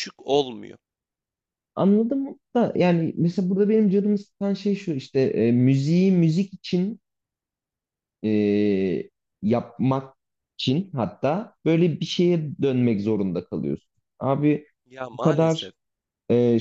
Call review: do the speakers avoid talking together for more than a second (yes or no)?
yes